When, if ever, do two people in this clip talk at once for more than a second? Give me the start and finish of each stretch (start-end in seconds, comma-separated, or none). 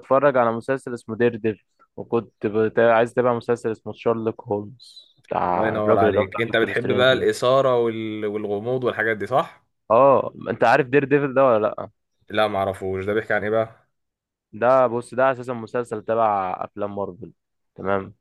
5.5-7.3